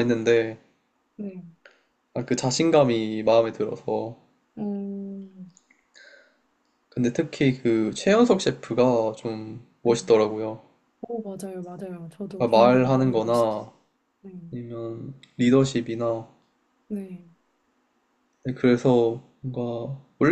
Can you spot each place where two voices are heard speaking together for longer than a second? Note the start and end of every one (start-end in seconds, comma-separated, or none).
12.4-13.6